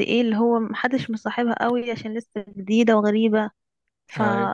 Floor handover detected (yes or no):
no